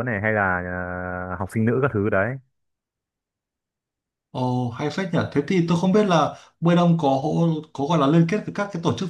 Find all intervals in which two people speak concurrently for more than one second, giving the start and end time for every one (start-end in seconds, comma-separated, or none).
none